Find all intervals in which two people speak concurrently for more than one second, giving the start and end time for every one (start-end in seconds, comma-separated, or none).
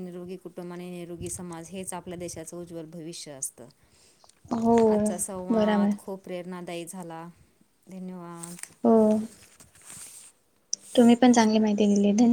none